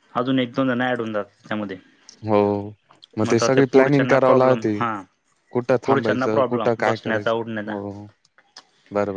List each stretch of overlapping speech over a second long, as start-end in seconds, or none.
5.9-8.0